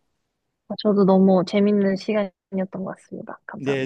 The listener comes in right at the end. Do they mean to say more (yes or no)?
yes